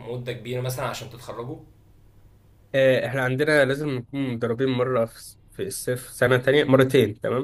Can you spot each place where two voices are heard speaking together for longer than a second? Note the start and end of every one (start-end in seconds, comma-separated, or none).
none